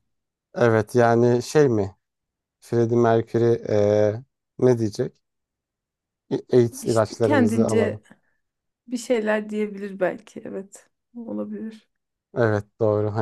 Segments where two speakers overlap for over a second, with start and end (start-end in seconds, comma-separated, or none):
6.8-8.0